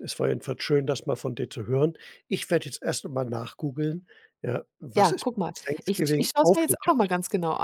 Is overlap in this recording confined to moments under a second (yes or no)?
no